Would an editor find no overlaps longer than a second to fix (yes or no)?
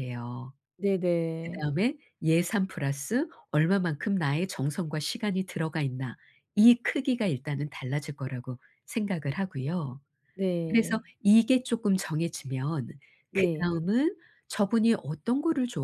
yes